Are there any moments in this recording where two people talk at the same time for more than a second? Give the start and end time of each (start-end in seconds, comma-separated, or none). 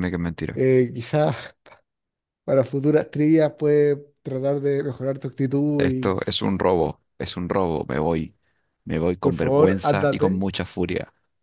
9.2-10.4